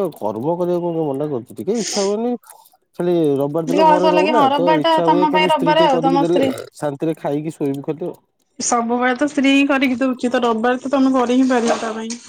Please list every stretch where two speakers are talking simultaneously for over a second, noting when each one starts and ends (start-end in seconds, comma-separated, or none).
3.7-6.5